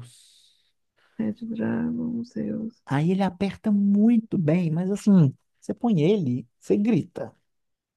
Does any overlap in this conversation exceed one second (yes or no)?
no